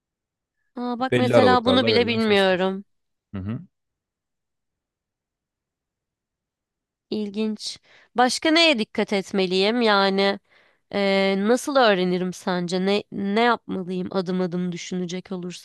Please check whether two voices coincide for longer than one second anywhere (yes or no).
yes